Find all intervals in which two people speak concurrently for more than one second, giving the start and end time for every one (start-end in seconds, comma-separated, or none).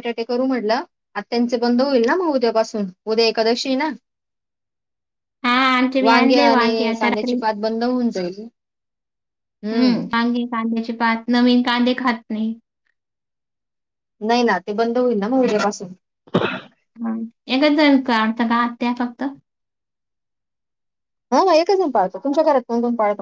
6.0-7.3